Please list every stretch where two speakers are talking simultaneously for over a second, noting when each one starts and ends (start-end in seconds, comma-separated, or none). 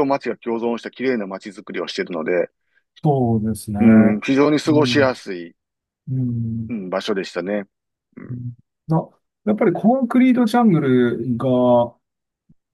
none